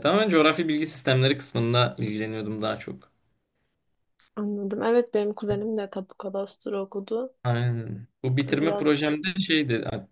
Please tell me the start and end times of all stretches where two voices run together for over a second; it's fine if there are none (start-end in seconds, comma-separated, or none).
none